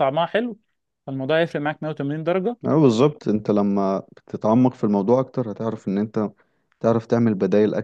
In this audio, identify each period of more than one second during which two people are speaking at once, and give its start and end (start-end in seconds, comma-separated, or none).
none